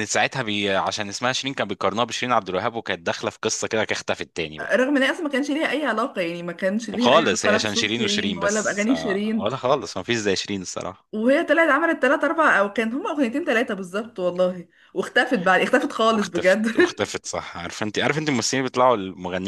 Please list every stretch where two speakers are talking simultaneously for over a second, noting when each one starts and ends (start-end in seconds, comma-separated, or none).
6.9-9.5